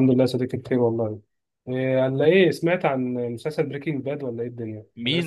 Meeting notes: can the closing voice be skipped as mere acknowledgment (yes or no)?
no